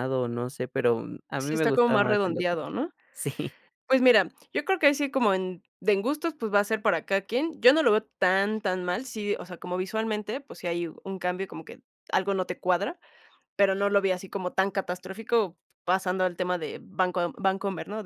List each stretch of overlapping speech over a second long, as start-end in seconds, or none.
1.4-2.6